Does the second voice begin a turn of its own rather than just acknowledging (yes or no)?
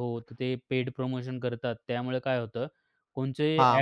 yes